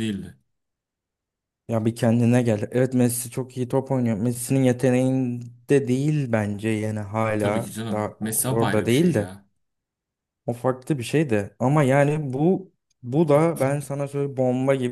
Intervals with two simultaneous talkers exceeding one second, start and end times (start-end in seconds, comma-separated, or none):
7.4-9.3